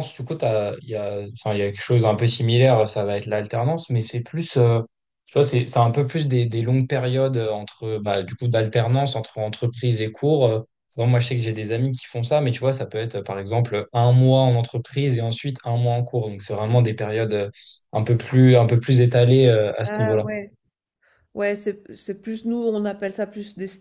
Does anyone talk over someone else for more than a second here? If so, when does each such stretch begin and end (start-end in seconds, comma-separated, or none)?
none